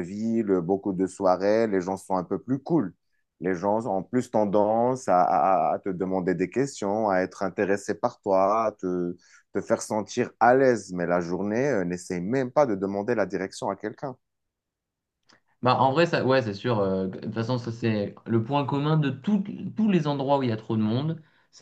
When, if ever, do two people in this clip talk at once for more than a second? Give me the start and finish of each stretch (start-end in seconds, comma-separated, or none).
none